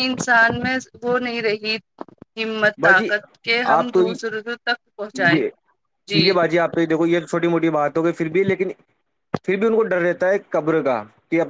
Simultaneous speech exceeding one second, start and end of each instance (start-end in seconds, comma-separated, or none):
none